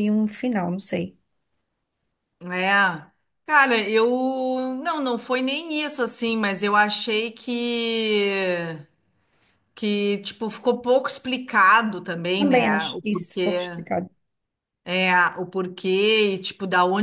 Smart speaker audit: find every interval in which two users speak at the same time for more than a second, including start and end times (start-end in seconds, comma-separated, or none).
12.4-13.8